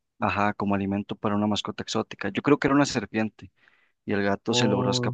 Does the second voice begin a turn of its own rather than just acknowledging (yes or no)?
no